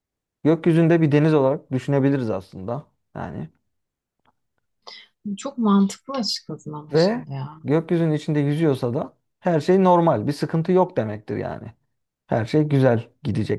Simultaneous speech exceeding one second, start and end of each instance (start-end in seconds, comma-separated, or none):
none